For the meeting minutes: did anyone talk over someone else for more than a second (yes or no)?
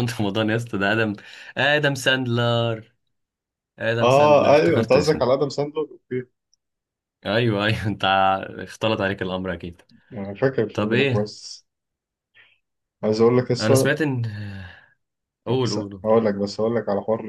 yes